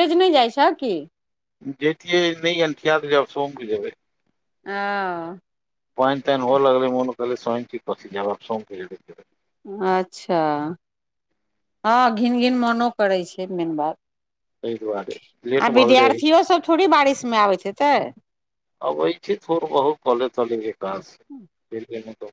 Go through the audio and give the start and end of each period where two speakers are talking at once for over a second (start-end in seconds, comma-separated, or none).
none